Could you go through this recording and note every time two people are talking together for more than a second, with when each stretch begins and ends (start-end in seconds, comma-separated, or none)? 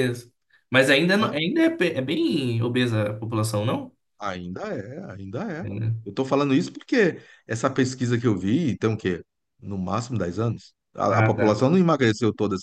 none